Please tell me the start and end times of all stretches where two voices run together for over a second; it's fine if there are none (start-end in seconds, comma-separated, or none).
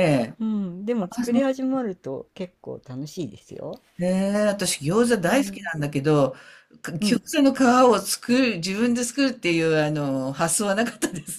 none